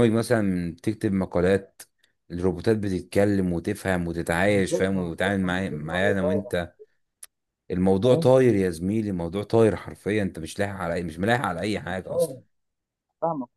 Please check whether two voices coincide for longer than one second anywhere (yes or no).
yes